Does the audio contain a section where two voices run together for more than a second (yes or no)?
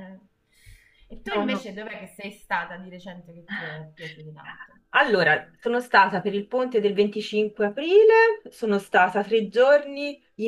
no